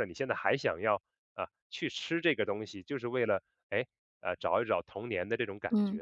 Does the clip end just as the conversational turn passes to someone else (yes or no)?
yes